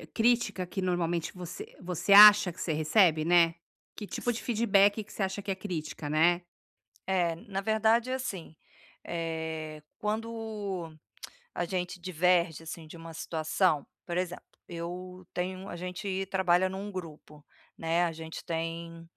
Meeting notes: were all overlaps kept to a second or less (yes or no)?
yes